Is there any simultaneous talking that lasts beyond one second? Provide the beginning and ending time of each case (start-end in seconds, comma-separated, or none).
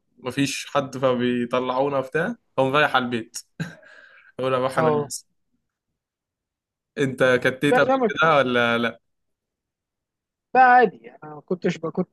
none